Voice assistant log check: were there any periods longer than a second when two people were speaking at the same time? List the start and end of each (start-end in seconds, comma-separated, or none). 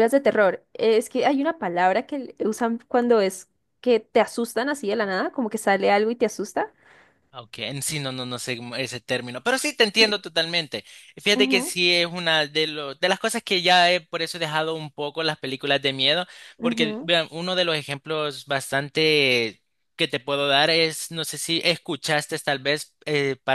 none